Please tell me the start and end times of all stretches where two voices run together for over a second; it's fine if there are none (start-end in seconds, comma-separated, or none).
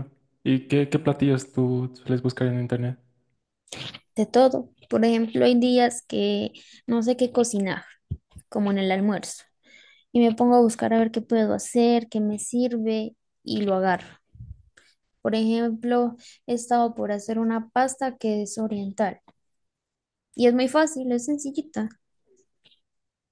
none